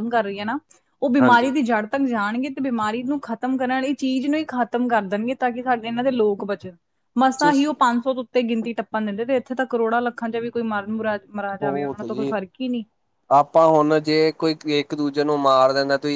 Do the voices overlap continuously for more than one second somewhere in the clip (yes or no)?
no